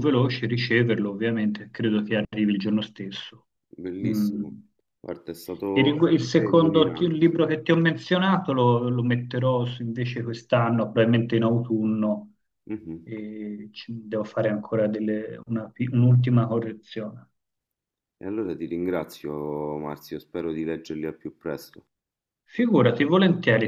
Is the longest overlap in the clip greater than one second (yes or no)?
yes